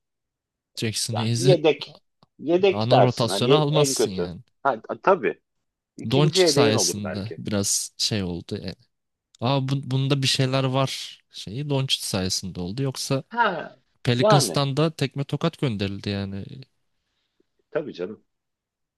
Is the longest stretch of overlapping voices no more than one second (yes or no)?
no